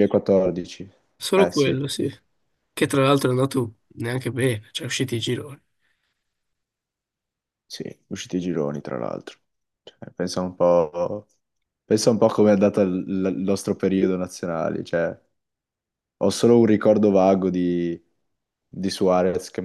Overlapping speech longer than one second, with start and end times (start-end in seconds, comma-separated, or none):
none